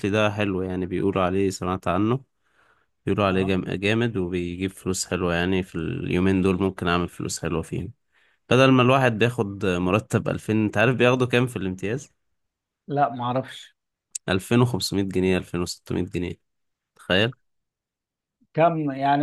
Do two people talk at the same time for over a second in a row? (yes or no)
no